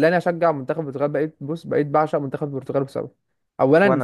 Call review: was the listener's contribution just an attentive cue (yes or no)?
yes